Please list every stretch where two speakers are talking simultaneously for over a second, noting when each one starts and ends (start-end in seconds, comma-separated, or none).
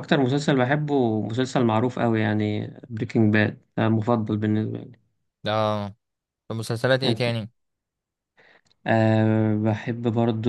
none